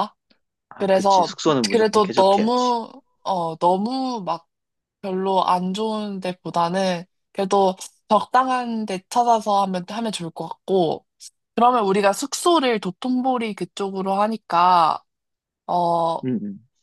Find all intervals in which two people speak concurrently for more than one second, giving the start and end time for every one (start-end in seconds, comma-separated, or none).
0.8-2.7